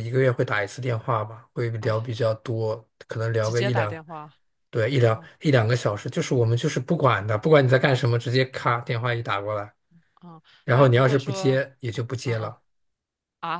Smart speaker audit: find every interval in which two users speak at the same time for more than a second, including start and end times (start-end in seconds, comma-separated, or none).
10.6-12.5